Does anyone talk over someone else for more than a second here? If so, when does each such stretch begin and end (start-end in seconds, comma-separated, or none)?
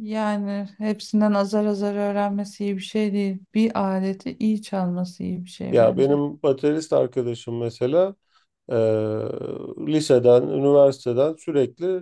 none